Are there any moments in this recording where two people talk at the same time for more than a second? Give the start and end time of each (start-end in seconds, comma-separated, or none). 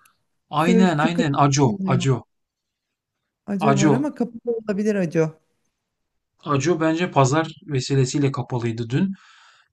0.6-2.1